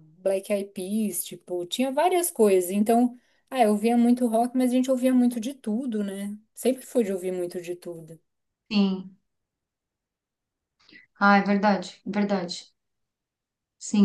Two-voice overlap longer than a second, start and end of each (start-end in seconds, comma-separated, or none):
none